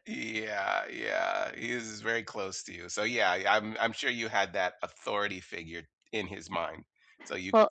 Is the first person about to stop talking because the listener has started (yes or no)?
no